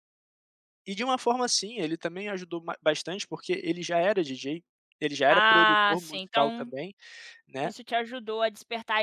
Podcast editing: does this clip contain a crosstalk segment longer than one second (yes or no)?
yes